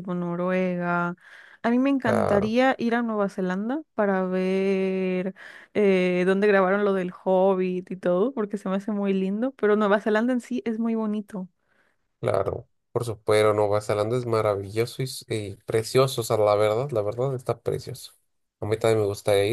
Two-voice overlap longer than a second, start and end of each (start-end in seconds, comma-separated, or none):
none